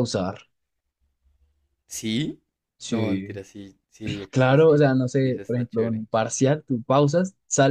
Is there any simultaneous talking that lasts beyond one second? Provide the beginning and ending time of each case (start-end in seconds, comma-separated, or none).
4.3-6.0